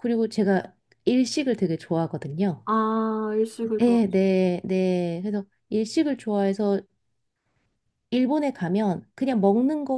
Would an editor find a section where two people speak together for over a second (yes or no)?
no